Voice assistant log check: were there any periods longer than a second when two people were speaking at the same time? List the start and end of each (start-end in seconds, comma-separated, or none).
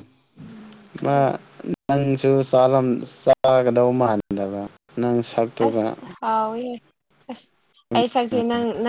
none